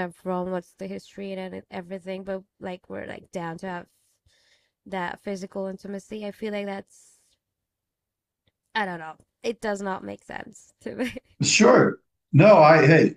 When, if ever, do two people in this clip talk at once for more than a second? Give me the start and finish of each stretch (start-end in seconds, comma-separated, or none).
none